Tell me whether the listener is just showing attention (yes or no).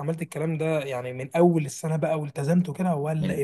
no